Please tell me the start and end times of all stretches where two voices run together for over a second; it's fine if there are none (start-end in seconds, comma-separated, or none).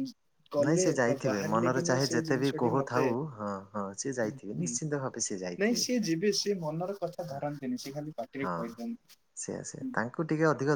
0.6-3.1